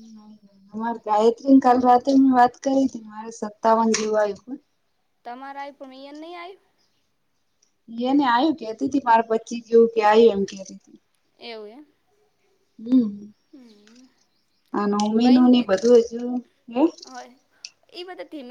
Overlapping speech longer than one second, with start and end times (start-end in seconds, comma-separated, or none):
none